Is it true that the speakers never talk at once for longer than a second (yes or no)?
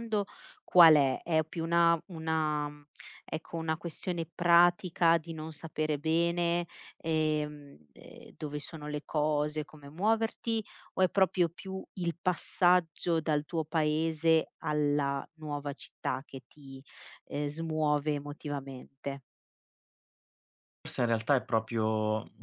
yes